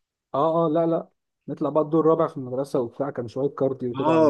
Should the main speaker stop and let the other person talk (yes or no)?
yes